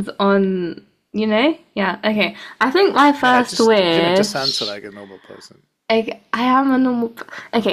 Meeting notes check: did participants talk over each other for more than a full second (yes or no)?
yes